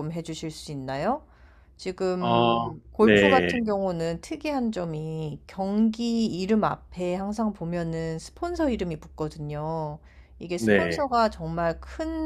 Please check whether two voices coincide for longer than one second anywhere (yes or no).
yes